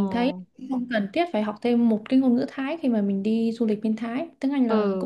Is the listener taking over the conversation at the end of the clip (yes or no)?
yes